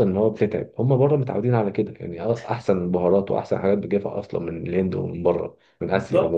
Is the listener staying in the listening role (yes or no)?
no